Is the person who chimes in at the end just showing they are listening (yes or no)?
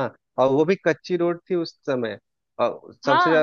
yes